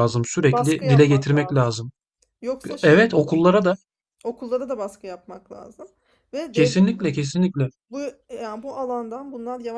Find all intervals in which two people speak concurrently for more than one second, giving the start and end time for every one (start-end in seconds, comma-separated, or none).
0.5-1.8